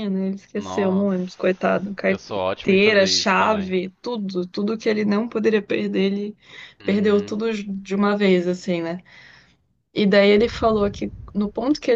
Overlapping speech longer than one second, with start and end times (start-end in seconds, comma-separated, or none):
2.1-3.7